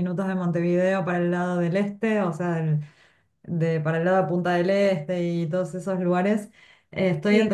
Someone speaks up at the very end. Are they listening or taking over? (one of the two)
listening